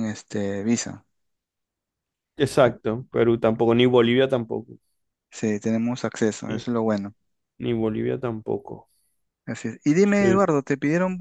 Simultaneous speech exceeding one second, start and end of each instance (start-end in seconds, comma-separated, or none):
none